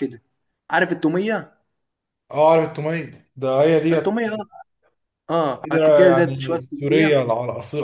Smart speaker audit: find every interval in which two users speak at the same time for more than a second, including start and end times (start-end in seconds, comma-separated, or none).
5.6-7.3